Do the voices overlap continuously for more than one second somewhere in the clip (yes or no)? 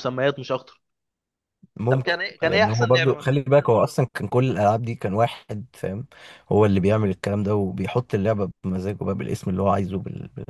yes